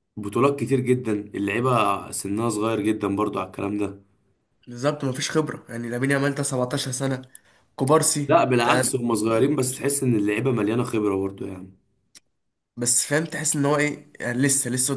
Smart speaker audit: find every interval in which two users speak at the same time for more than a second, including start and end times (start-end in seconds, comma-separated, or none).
none